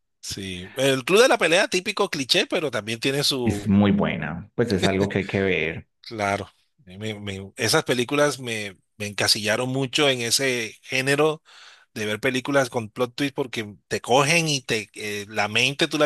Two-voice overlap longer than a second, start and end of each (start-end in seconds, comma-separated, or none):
none